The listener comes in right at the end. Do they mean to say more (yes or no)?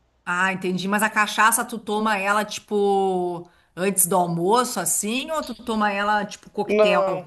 yes